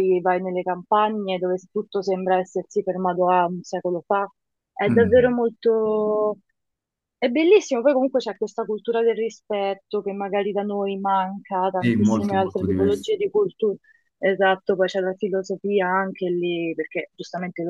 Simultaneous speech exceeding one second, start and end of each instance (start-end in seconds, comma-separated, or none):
11.8-13.1